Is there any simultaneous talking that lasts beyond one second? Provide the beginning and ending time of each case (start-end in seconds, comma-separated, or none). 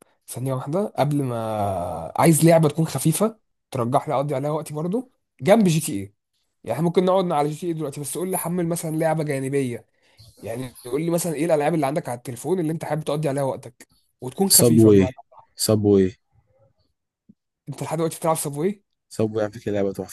none